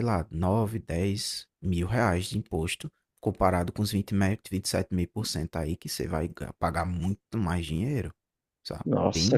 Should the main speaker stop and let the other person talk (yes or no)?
yes